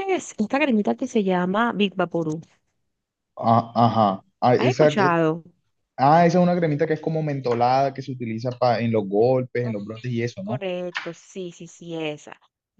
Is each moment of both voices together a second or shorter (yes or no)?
yes